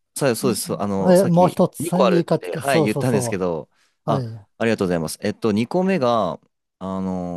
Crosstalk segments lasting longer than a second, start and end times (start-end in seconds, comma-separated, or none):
1.1-3.4